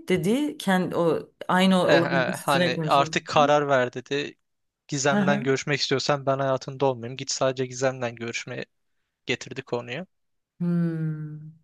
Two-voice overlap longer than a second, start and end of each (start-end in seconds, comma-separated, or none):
1.8-3.2